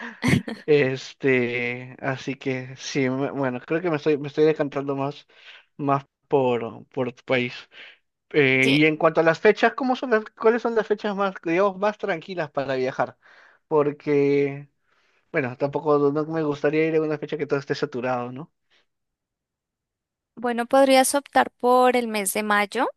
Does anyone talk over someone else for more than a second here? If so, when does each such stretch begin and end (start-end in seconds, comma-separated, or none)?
none